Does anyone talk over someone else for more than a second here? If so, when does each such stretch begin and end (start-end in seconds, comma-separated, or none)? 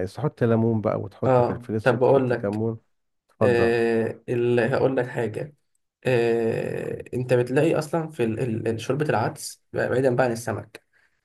1.2-2.6